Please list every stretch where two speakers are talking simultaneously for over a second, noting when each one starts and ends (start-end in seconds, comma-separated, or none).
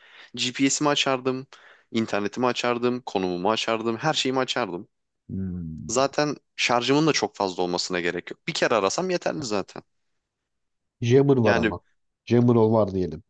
none